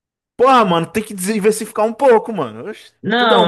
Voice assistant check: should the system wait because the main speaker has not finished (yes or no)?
no